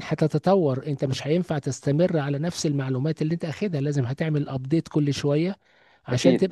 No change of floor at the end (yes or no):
yes